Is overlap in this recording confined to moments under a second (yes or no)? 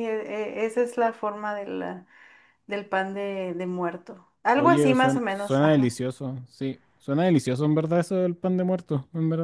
no